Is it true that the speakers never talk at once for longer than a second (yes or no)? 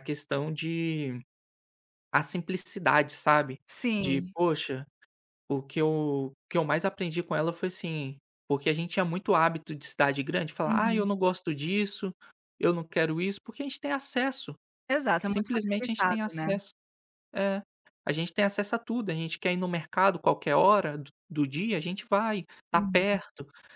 no